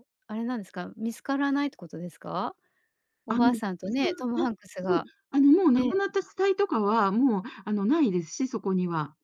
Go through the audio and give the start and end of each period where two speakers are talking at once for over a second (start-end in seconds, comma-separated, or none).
3.3-5.1